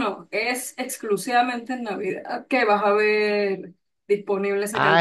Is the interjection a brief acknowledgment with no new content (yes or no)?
no